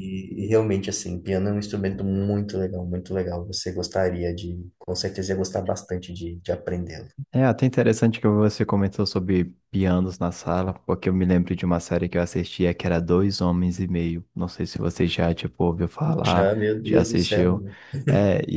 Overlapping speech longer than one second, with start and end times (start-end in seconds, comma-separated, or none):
16.2-17.6